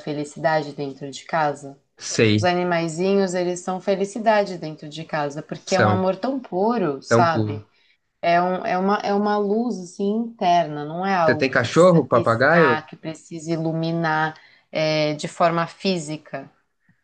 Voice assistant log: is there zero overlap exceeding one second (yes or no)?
no